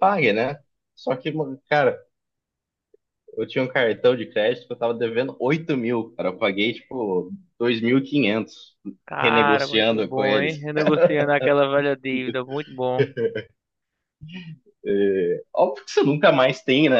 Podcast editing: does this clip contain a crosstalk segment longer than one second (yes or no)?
yes